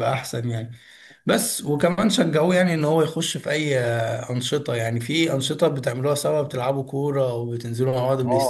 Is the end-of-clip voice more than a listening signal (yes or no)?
yes